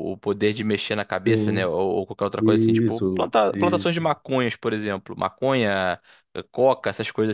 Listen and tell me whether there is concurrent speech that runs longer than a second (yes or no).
yes